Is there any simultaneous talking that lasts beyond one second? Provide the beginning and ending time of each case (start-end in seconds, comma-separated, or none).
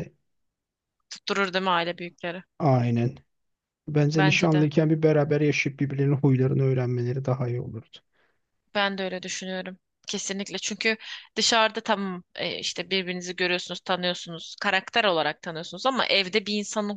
none